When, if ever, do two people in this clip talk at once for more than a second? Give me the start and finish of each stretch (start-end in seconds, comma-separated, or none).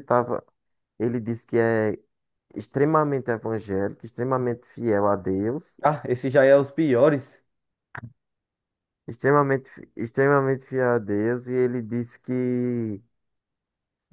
none